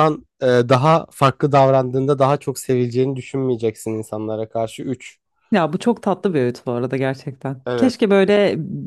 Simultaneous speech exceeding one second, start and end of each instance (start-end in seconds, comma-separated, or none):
none